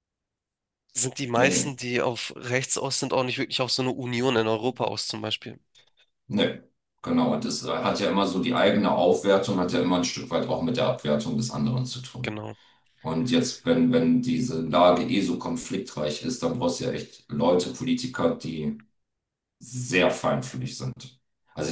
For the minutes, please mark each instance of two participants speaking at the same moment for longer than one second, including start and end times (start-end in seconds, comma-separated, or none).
none